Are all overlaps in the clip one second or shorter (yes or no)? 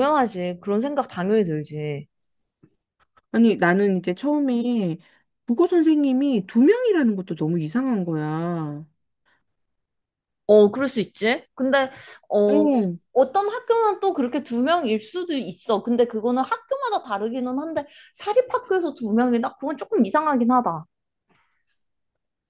yes